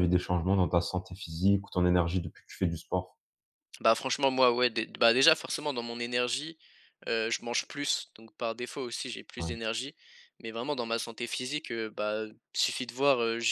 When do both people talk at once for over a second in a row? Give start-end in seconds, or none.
none